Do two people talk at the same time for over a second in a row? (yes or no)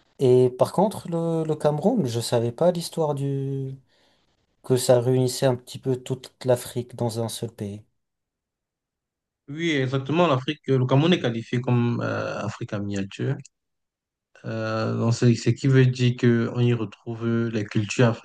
no